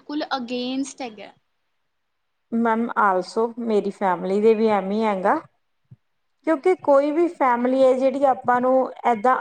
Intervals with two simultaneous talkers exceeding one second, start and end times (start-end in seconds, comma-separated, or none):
6.5-7.9